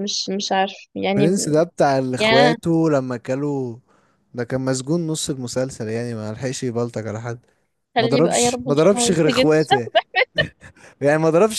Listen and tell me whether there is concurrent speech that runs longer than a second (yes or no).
yes